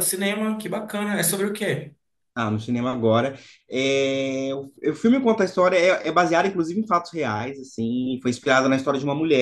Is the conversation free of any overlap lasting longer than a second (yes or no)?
yes